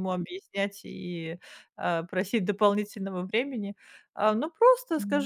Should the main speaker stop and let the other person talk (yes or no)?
no